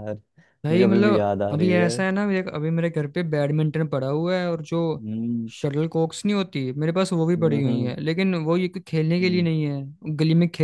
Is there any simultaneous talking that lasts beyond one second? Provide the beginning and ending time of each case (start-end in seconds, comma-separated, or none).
0.7-2.0